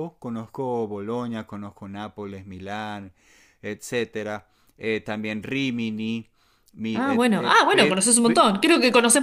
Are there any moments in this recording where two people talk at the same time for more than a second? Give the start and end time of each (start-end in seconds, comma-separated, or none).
6.9-8.4